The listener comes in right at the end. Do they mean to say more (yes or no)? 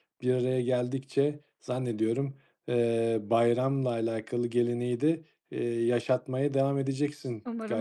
yes